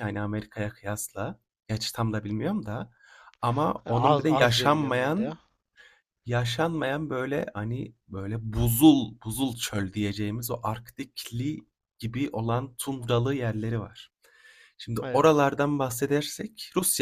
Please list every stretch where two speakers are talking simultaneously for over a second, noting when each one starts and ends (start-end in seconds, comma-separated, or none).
3.8-5.4